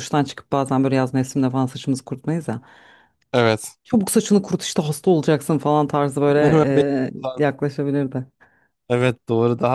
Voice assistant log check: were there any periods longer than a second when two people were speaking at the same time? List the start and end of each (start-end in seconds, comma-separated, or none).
none